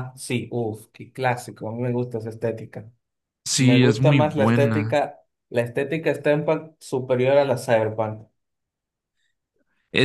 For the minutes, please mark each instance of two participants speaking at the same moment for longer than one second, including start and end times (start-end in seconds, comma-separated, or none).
3.6-5.0